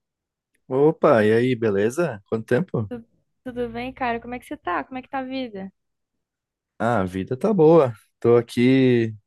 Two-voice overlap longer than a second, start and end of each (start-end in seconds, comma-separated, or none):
none